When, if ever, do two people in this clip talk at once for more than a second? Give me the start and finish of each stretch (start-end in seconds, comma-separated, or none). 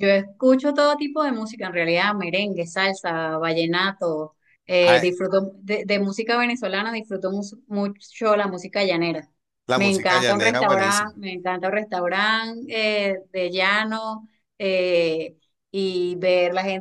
9.7-11.1